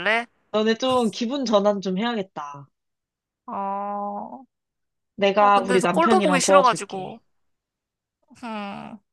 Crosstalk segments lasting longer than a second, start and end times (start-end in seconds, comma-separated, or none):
5.4-7.2